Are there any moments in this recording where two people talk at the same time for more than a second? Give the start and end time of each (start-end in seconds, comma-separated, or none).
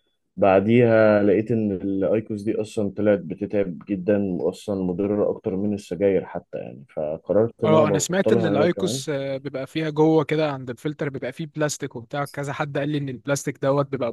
7.6-9.0